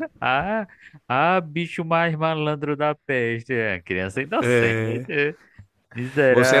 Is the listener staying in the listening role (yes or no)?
no